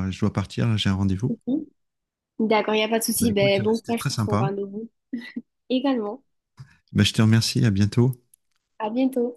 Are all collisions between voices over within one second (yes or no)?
no